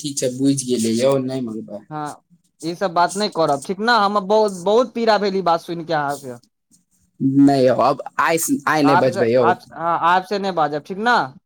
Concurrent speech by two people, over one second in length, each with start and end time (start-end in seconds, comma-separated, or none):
none